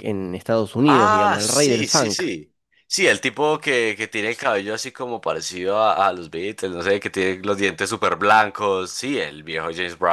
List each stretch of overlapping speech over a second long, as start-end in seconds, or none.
0.9-2.2